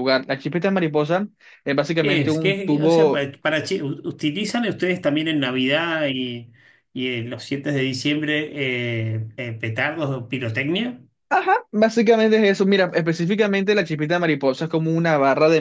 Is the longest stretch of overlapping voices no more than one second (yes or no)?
no